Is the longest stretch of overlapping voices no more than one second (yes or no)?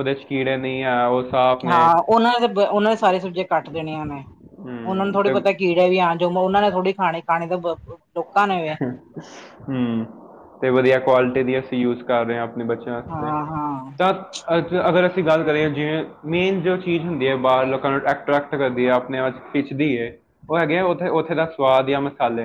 yes